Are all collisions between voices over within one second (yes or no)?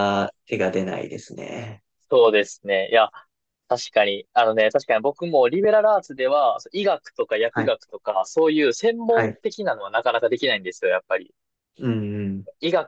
yes